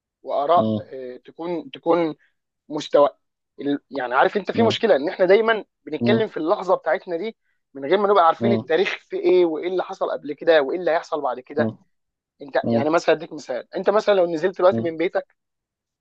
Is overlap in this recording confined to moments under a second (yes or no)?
yes